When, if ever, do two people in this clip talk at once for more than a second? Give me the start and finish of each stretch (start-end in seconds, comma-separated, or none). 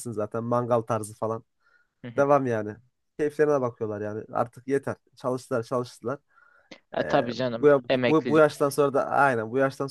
7.0-8.6